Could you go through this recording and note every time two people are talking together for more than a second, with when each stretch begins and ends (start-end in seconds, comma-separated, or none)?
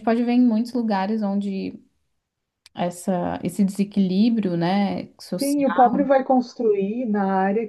none